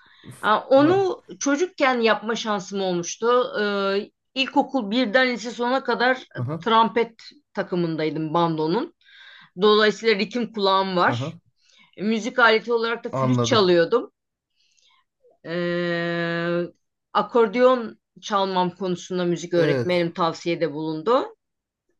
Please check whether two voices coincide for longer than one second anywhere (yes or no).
no